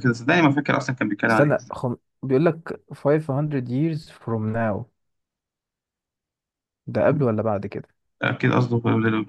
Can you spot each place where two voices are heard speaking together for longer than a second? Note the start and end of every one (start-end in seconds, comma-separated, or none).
none